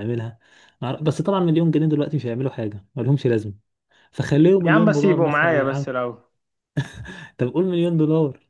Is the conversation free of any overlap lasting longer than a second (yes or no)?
no